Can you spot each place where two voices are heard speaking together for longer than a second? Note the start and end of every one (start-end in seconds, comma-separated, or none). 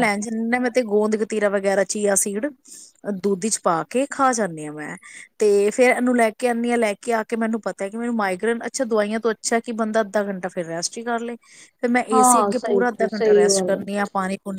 12.1-13.8